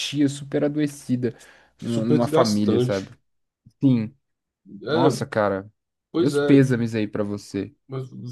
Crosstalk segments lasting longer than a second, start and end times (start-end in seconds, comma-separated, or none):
1.8-3.1